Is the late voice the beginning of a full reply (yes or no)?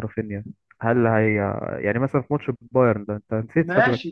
yes